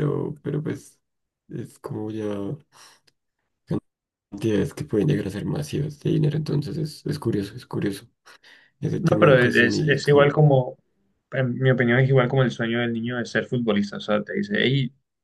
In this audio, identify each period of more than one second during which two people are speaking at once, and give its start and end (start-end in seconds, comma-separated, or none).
9.0-10.4